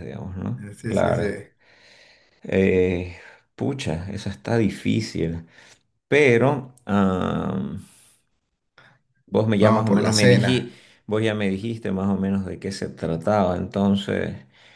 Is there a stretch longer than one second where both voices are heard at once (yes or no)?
yes